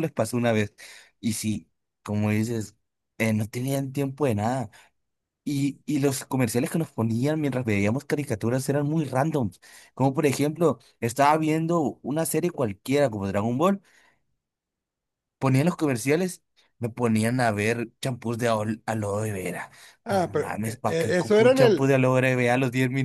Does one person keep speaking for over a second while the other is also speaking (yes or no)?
yes